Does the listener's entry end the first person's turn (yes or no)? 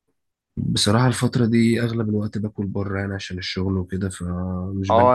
yes